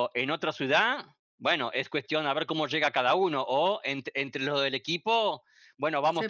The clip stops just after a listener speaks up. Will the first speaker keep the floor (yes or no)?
yes